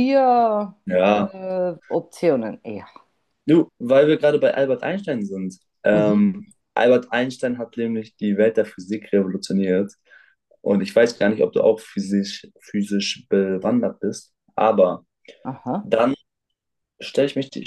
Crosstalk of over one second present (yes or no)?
no